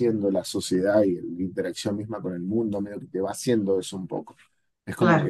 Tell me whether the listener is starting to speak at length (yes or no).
no